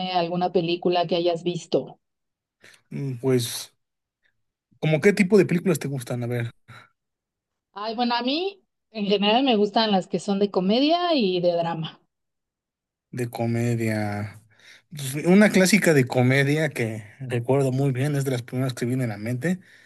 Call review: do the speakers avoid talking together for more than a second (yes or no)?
yes